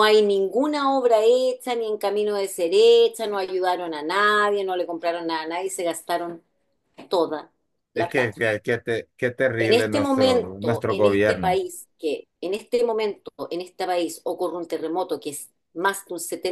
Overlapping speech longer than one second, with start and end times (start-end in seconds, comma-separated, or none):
9.6-11.6